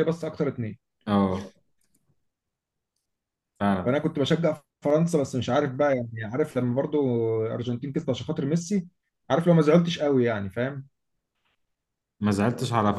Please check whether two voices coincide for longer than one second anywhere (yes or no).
no